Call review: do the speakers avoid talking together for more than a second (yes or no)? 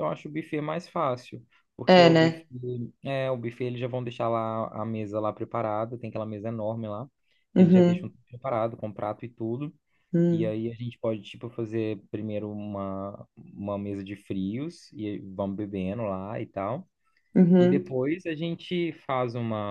yes